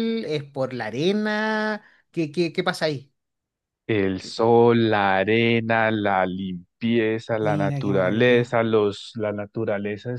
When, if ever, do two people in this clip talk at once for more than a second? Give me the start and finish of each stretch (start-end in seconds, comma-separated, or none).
7.4-8.6